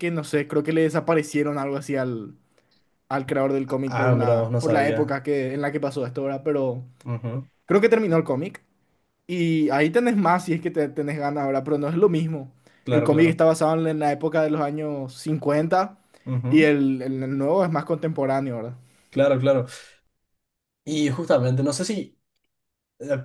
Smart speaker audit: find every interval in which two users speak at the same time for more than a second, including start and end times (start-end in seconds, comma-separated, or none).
3.9-5.2